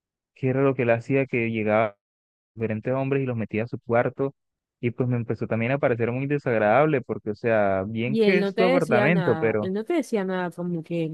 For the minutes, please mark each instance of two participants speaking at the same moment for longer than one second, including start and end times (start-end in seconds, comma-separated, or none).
8.1-9.7